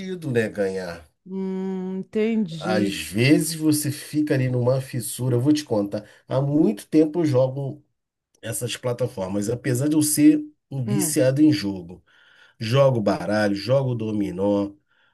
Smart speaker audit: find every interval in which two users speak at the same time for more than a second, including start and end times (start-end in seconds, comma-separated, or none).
none